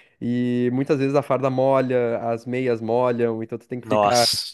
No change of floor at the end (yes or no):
yes